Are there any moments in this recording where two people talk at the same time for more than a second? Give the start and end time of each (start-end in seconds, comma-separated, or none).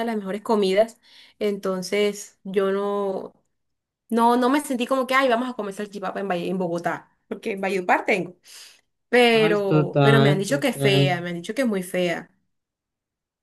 9.4-11.0